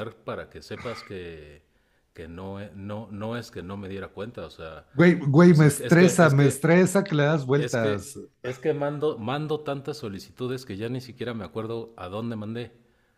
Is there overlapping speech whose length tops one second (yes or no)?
yes